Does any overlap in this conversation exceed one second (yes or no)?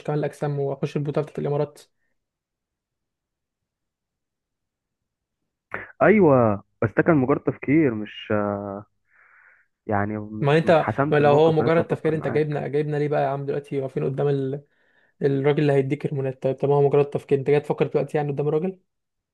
yes